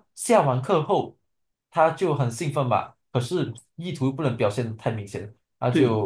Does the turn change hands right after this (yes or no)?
no